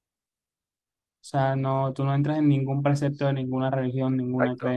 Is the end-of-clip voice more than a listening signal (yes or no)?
no